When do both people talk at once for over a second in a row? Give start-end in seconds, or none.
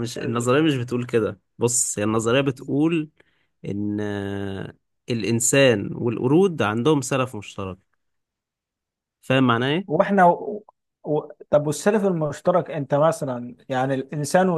none